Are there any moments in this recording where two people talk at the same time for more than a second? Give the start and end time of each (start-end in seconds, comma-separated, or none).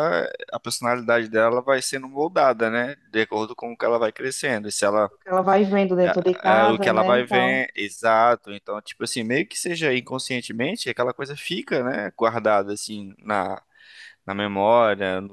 6.0-7.6